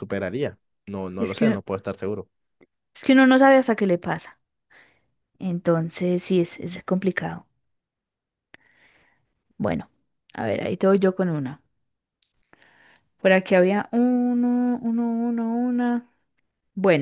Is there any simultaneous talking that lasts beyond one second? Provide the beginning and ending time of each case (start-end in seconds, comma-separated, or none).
none